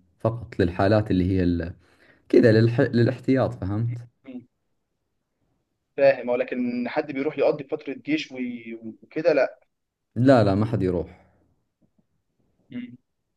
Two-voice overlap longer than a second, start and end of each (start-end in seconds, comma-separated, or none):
none